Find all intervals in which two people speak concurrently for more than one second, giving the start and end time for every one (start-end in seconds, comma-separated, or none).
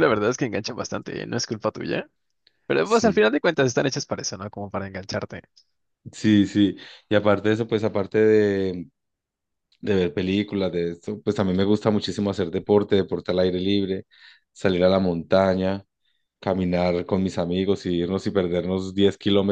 none